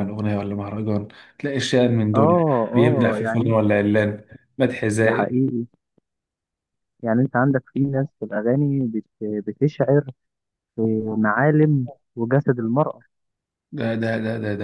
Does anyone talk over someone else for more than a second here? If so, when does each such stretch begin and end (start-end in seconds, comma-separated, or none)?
2.1-3.6